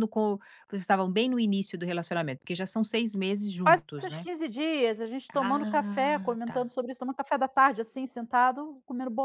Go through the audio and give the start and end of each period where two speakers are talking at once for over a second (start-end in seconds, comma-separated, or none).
5.3-6.6